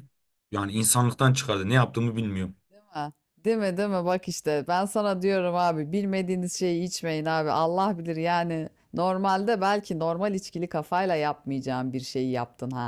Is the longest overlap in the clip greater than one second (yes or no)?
no